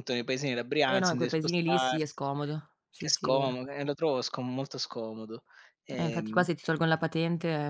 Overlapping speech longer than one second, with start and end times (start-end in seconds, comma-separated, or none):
0.9-2.2